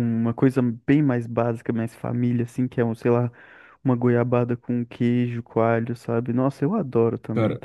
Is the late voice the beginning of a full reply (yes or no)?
yes